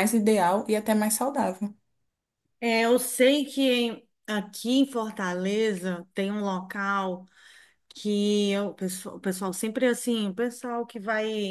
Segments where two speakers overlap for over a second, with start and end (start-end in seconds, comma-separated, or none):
none